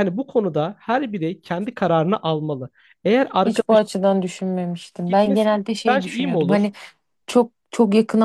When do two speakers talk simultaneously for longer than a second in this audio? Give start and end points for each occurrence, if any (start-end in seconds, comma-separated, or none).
5.1-6.7